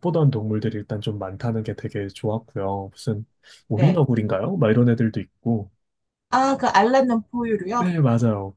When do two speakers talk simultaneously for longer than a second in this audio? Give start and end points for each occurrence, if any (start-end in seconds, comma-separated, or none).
none